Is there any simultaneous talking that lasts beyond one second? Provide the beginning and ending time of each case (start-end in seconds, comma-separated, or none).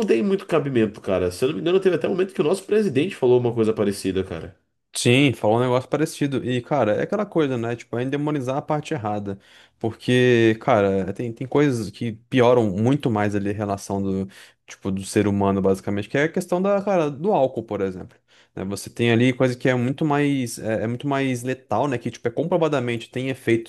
none